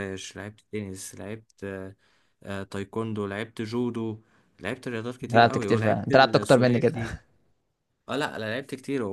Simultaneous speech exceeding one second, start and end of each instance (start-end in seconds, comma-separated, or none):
5.2-7.0